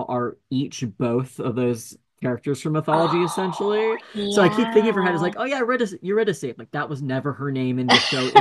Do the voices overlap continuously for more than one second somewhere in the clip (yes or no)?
yes